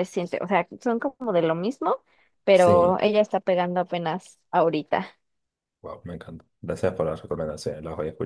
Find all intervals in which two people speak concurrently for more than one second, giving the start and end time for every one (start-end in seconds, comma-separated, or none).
none